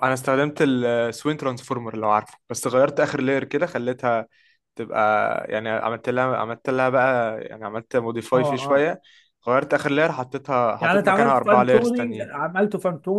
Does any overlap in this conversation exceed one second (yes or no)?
yes